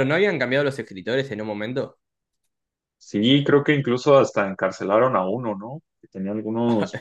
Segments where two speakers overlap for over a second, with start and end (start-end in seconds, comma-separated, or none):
none